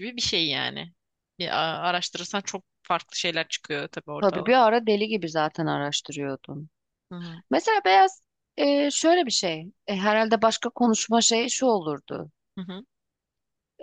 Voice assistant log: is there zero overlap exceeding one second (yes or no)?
yes